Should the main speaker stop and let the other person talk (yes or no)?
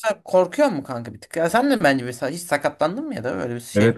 yes